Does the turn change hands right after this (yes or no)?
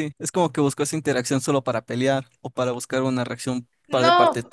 yes